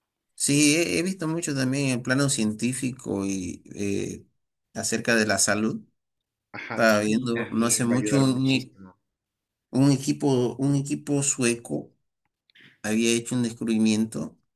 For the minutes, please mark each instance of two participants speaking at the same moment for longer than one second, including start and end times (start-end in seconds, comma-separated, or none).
6.7-8.8